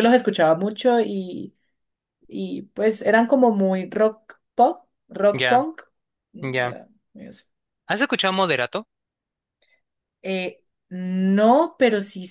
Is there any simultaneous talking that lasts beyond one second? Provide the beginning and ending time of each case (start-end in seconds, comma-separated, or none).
none